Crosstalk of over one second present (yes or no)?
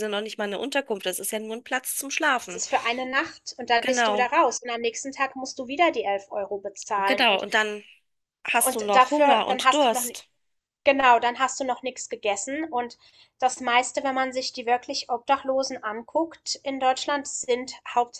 yes